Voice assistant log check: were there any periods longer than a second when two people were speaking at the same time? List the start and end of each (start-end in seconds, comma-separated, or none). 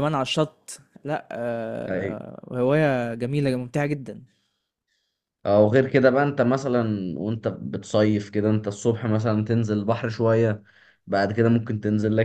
none